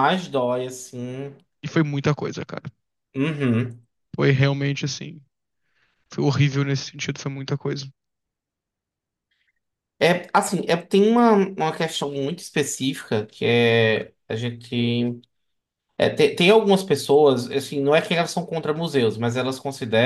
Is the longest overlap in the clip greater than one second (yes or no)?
no